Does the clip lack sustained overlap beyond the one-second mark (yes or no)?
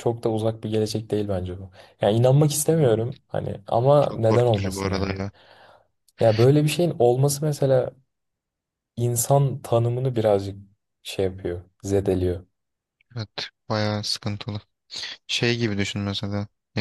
no